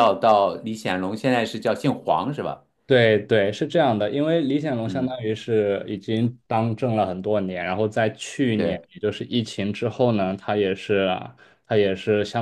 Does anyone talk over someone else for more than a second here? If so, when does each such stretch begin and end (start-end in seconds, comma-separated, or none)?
none